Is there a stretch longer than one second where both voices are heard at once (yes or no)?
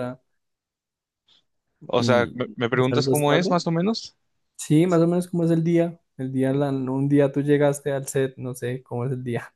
yes